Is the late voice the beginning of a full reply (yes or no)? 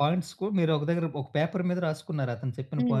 yes